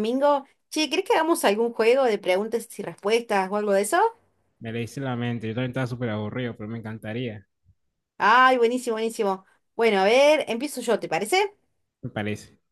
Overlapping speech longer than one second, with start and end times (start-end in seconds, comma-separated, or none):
none